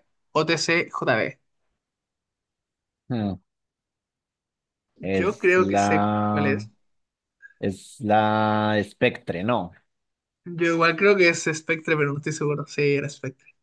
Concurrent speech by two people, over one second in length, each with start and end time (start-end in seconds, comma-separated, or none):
5.0-6.5